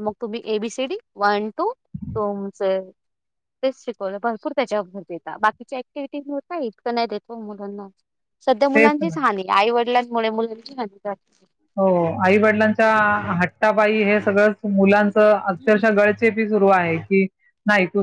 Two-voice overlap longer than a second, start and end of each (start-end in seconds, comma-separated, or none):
none